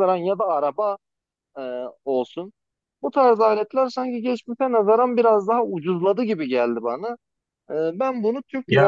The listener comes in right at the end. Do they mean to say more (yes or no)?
no